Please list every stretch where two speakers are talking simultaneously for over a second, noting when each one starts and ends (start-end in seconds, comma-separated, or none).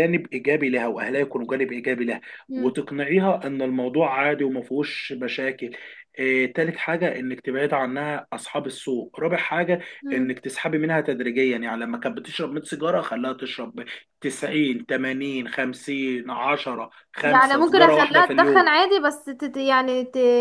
17.2-18.7